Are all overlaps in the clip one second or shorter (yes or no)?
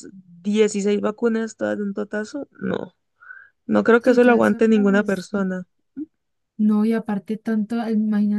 no